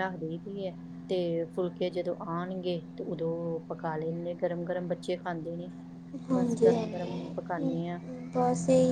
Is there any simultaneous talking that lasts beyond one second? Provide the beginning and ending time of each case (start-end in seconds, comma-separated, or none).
6.3-7.7